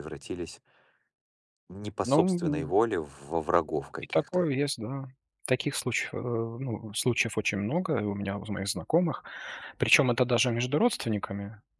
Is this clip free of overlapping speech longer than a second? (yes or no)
yes